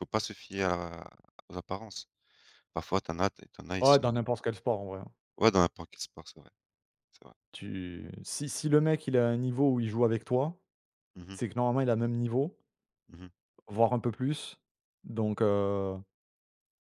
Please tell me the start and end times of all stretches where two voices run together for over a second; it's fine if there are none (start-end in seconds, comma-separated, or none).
none